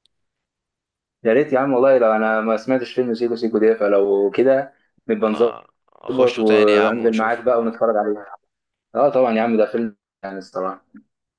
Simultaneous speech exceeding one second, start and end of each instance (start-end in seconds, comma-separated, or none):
6.1-7.5